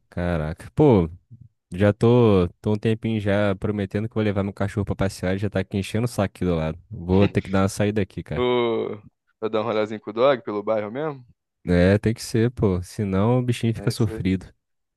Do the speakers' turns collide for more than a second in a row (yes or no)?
no